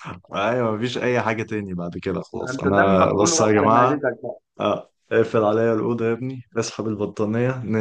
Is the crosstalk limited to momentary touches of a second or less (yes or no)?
no